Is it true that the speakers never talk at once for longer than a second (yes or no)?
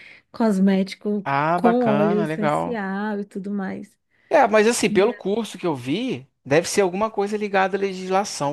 no